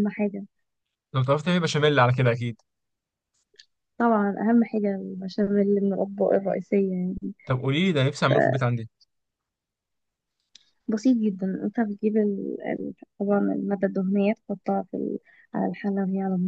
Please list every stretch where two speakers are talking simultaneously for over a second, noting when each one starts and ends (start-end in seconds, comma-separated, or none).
none